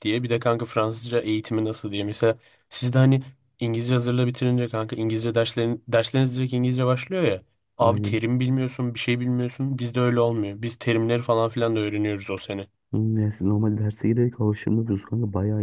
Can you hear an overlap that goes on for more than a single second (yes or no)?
no